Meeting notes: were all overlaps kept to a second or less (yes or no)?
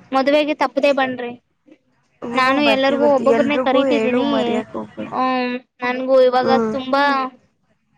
no